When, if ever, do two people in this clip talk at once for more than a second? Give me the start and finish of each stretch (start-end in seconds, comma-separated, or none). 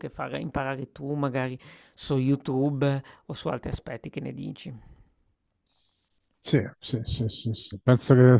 none